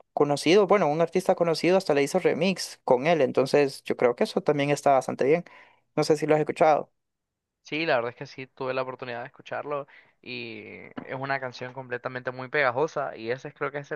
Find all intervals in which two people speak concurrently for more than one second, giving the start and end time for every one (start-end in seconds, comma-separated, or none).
none